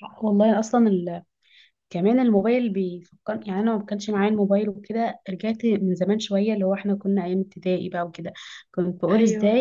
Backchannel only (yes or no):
yes